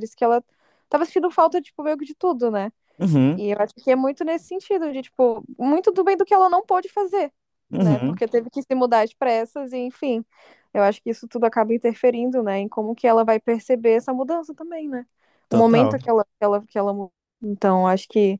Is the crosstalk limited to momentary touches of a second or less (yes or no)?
yes